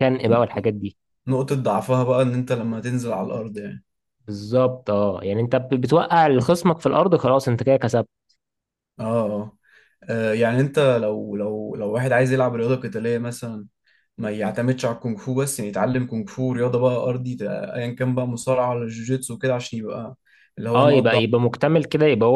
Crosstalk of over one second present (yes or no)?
no